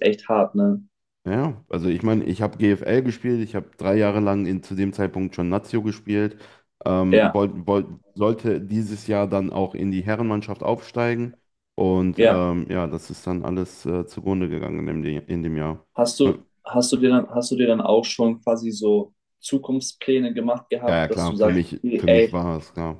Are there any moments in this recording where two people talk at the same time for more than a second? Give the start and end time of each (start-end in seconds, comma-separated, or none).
20.9-22.4